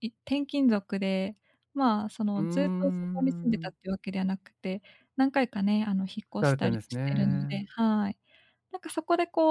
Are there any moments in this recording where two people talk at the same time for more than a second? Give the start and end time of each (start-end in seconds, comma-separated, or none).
2.4-3.7, 6.4-7.7